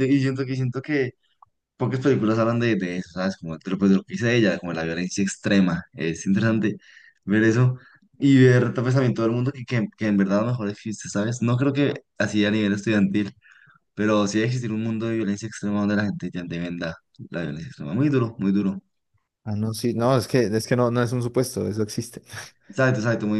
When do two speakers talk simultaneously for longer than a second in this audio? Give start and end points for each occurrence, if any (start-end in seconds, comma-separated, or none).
none